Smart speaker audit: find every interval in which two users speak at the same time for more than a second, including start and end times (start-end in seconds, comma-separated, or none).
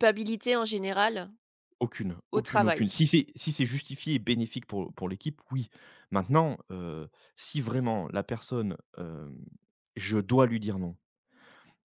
none